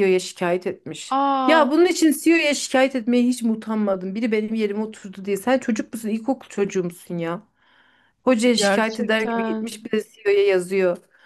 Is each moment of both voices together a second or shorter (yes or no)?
no